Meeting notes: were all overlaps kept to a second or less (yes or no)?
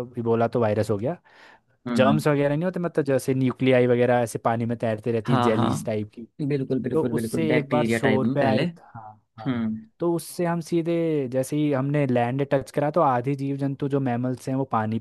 no